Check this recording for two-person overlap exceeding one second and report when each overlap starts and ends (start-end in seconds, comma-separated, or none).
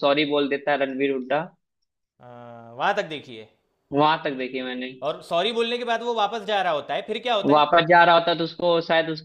none